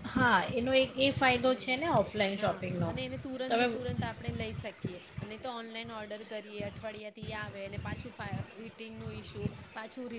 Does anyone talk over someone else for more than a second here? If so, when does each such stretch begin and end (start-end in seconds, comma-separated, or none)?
none